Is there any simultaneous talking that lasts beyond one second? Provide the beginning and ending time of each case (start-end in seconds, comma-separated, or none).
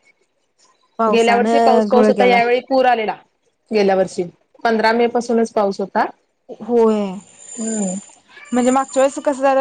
1.1-2.4